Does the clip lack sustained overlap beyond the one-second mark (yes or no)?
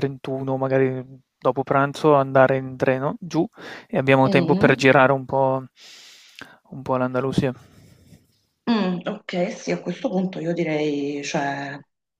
yes